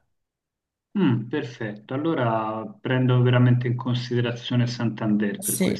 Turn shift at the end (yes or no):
yes